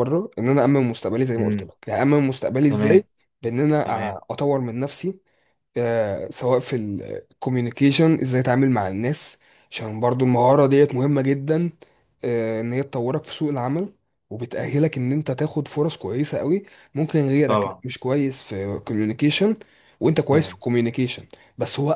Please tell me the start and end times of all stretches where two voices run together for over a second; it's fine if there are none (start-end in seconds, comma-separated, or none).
none